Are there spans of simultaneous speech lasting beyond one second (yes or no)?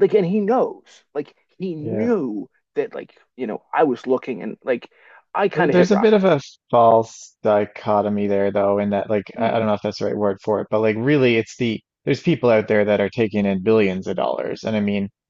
no